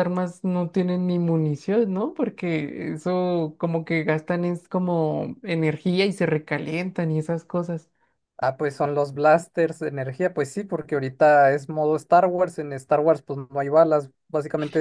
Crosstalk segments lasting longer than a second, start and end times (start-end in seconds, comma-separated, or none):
none